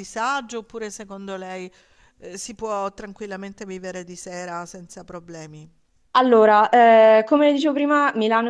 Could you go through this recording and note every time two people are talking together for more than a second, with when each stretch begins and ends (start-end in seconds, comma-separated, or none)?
none